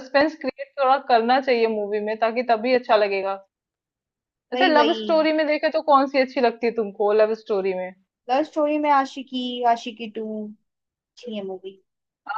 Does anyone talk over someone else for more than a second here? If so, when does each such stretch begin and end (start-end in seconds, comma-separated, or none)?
none